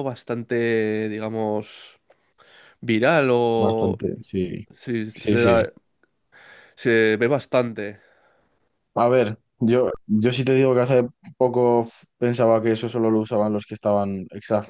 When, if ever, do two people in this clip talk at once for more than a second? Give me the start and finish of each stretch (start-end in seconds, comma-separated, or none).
none